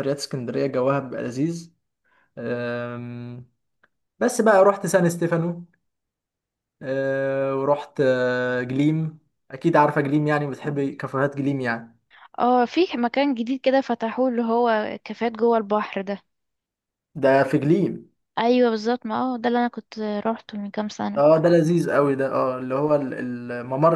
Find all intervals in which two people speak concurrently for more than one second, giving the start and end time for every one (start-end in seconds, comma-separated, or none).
none